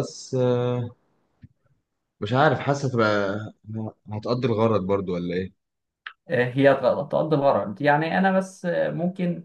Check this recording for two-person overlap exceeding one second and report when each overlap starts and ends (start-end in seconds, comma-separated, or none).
none